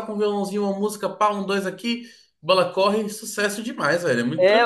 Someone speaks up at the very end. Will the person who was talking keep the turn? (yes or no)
no